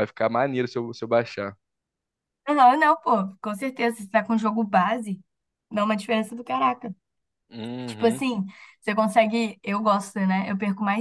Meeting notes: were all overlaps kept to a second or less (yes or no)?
yes